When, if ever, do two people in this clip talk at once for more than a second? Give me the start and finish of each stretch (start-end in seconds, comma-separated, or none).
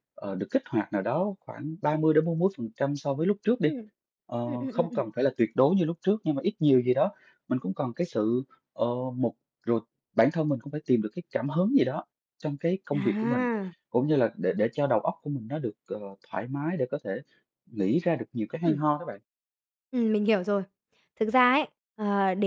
none